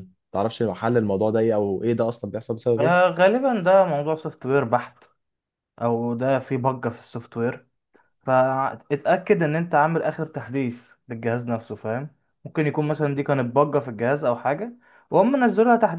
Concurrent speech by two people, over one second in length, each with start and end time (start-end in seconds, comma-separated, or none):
none